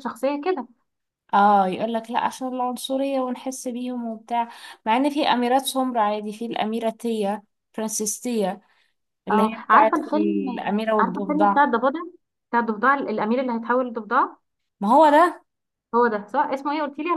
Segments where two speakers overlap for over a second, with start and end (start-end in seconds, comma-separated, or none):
9.3-11.6